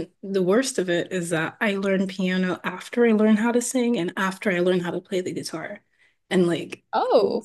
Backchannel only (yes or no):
yes